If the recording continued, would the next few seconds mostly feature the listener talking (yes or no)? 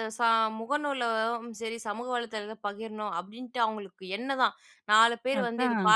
no